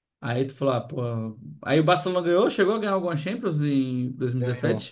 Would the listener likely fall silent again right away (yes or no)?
no